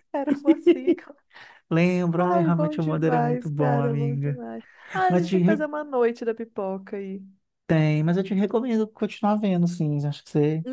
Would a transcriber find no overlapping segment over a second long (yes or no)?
no